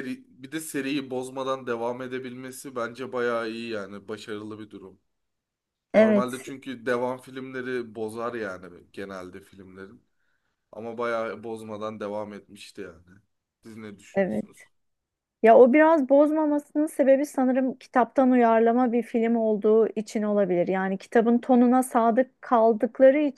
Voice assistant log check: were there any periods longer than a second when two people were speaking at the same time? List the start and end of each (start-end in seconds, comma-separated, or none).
none